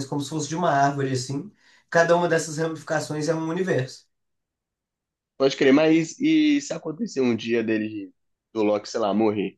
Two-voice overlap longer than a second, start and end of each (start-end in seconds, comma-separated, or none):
none